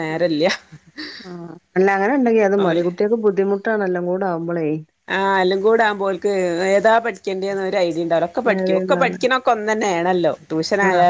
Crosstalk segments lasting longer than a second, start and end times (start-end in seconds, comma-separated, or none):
none